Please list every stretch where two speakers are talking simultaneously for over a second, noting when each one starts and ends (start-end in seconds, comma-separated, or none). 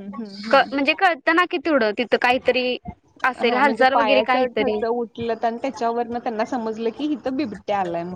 3.3-4.8